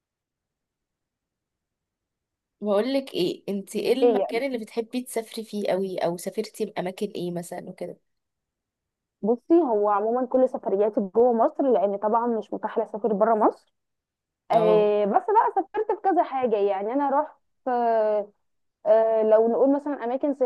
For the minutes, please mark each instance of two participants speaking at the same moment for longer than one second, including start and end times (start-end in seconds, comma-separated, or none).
none